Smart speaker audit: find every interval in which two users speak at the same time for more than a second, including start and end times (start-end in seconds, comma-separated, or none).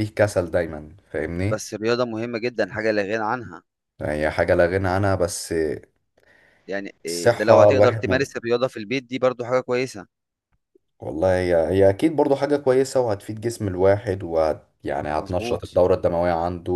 7.1-8.3